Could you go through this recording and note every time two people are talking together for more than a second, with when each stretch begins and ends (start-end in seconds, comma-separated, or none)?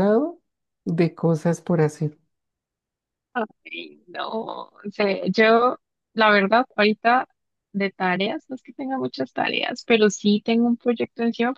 none